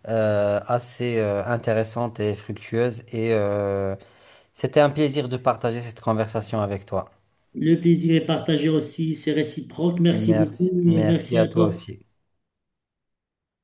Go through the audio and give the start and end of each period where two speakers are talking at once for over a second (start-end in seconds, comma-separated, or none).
10.1-11.8